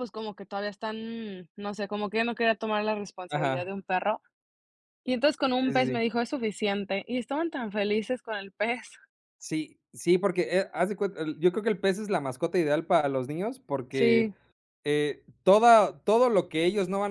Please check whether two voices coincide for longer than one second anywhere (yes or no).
no